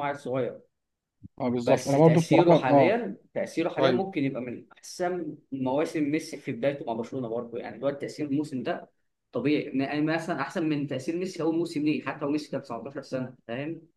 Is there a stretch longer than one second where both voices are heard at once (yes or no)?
yes